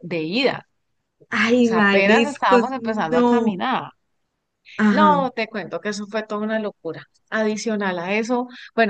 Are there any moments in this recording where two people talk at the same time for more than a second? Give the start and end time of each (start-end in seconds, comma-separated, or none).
1.6-3.6